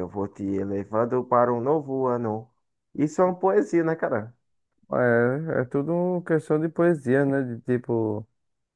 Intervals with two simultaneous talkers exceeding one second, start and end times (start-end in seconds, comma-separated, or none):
none